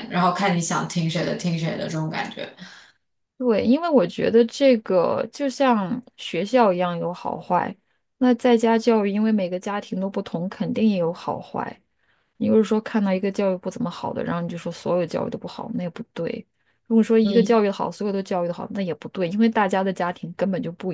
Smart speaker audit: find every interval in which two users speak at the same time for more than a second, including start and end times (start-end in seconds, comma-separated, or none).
none